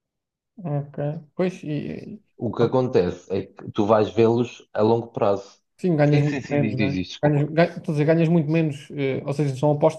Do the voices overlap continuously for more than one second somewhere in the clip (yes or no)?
yes